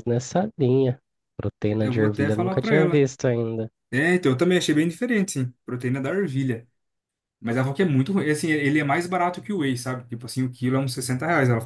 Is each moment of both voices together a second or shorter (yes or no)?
no